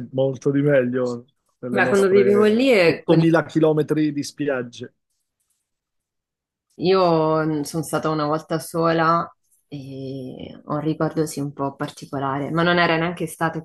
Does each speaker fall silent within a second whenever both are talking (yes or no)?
no